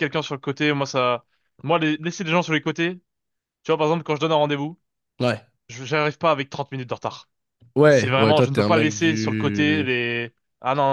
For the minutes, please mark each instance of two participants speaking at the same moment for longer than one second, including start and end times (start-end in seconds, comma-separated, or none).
7.9-9.9